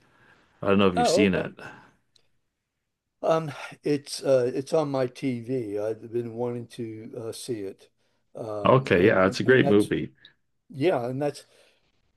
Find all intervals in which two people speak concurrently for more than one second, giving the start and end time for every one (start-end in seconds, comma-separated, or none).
8.7-9.9